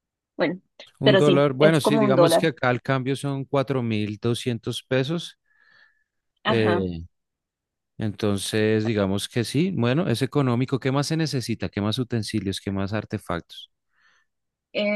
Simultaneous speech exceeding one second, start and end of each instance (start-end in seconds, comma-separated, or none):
1.0-2.5